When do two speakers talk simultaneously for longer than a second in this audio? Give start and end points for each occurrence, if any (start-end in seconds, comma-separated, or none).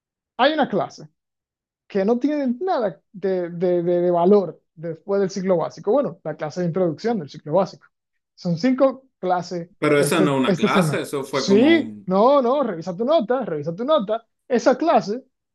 9.8-12.1